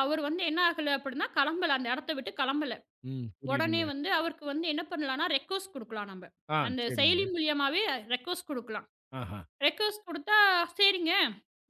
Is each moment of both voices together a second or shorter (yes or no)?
yes